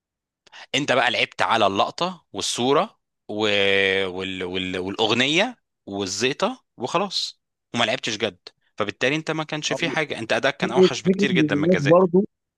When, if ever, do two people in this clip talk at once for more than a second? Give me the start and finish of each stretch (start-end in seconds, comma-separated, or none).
10.6-12.1